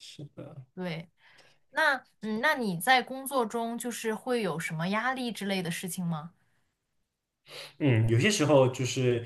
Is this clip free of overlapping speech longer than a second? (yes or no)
yes